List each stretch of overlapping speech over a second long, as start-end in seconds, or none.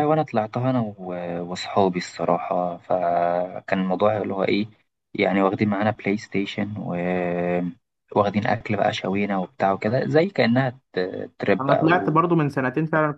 none